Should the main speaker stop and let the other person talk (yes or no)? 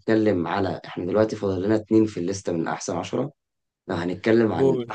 no